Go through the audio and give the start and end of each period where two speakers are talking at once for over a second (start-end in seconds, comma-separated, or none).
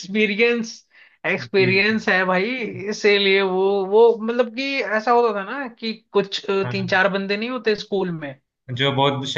none